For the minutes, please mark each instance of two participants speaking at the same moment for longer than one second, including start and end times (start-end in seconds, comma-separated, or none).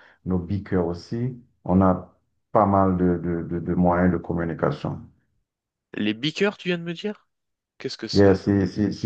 none